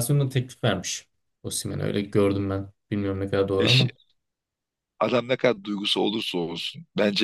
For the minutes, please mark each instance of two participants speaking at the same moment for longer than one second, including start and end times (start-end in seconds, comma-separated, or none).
none